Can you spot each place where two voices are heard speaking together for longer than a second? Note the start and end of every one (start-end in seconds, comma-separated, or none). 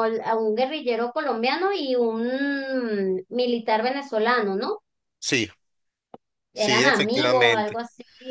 6.5-7.8